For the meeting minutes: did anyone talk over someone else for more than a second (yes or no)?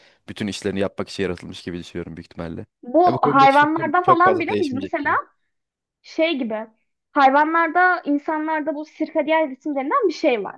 yes